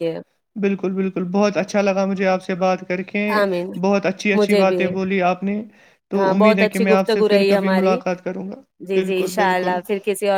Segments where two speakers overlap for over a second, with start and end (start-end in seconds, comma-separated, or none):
6.2-8.0